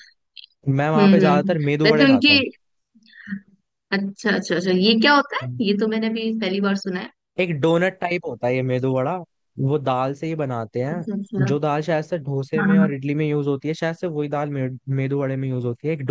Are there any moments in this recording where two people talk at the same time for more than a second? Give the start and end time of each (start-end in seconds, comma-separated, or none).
1.0-2.4